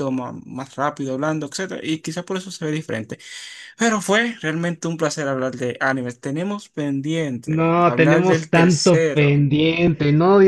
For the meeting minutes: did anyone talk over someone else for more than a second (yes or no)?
yes